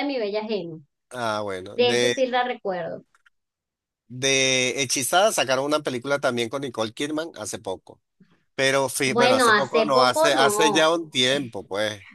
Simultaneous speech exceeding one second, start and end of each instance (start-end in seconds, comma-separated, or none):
9.1-10.9